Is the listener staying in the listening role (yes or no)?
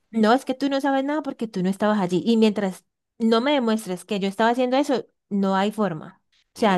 no